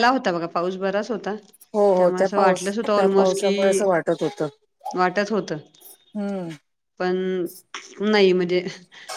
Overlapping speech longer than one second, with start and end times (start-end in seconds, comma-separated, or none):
2.0-3.5